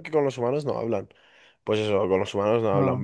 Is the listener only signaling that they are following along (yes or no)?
yes